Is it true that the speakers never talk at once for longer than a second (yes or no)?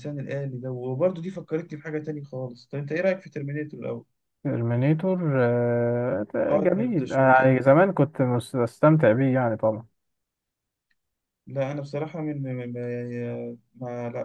no